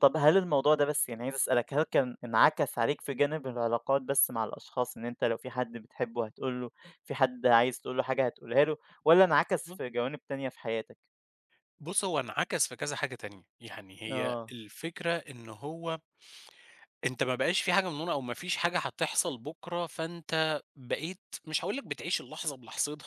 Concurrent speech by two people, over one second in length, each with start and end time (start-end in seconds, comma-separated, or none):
none